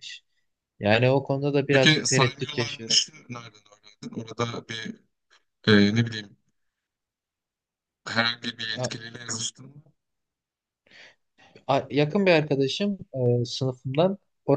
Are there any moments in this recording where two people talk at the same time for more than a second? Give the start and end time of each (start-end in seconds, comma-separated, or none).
1.7-3.0